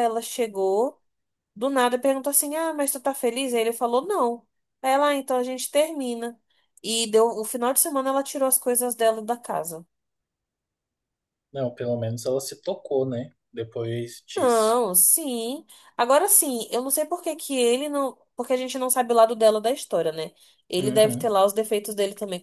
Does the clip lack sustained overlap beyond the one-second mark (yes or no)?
yes